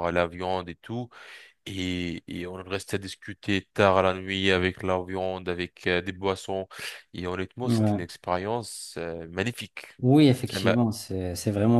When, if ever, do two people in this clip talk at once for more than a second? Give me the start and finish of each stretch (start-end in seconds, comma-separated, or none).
none